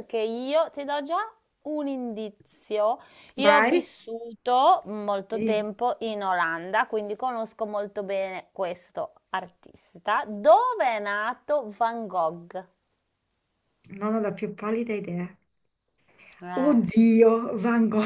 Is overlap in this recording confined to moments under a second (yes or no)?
yes